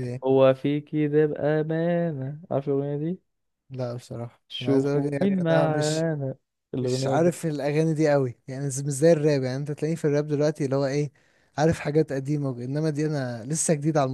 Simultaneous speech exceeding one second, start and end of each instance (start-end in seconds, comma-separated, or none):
4.5-6.0